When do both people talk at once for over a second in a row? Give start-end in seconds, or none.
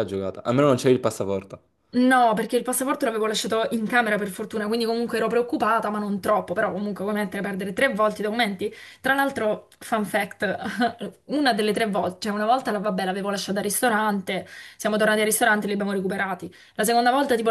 none